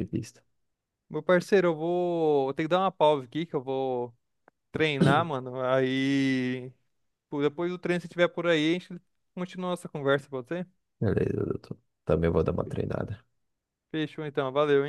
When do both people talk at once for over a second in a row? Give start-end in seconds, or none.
none